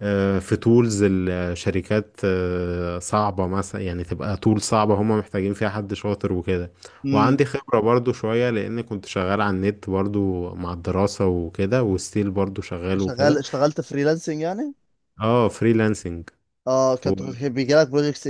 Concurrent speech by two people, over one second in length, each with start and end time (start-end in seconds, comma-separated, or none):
none